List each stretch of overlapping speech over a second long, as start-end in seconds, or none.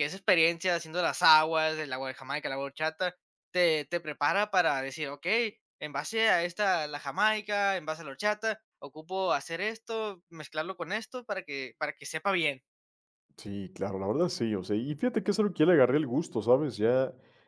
none